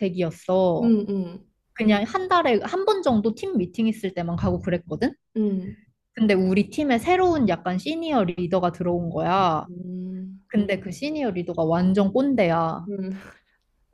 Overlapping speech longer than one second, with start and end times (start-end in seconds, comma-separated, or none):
none